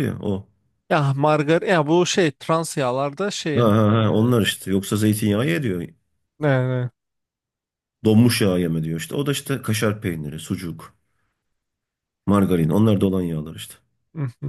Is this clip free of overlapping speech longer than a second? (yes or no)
yes